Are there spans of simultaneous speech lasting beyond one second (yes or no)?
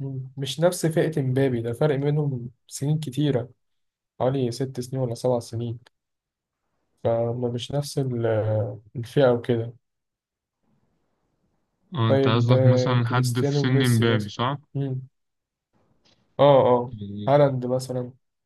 yes